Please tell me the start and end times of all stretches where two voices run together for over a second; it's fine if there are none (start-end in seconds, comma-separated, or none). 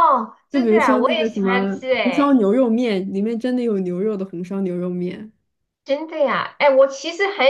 0.5-2.4